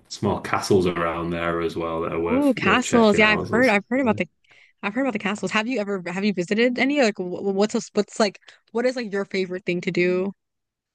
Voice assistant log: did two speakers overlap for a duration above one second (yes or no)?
yes